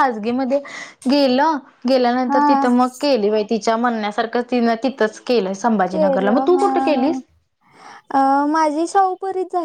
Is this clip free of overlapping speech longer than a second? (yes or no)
yes